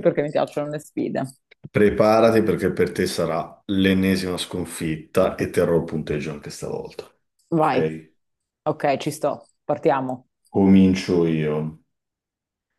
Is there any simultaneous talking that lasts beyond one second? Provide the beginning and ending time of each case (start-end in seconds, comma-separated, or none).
none